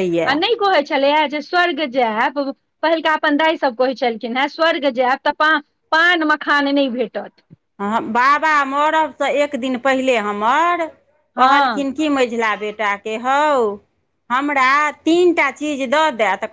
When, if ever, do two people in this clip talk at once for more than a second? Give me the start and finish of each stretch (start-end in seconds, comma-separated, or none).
none